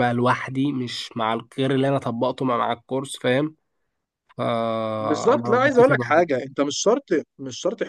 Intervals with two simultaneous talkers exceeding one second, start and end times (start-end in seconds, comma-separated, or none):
5.0-6.3